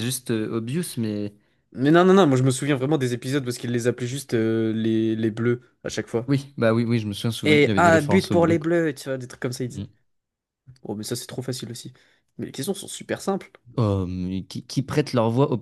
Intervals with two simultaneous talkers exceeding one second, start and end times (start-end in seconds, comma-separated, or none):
7.4-8.7